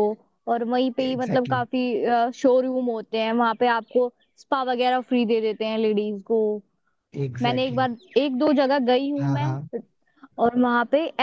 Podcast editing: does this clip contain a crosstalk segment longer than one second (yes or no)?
no